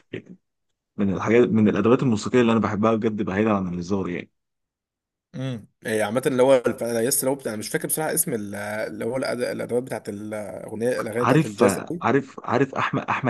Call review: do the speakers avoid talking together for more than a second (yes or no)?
yes